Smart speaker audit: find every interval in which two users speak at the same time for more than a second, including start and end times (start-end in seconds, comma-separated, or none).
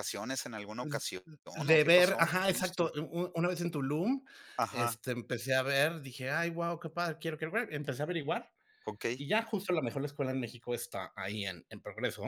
1.5-2.9